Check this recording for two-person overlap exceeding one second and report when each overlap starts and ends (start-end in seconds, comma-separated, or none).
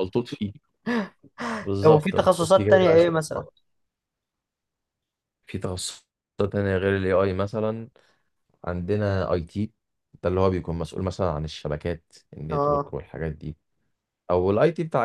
1.8-3.1